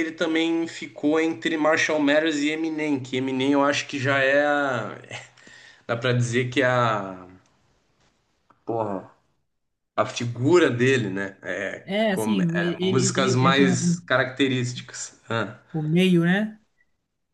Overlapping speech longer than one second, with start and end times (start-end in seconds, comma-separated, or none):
12.1-14.0